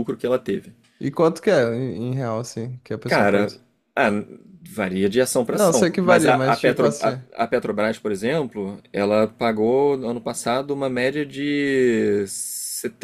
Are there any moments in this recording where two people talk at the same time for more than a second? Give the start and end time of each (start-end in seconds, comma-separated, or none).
5.5-7.2